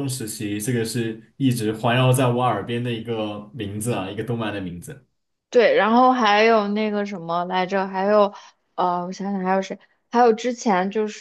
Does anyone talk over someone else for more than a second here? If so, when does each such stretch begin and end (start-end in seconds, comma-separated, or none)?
none